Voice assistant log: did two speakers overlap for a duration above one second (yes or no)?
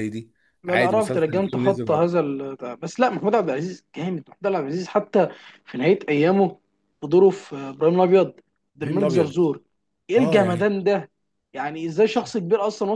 yes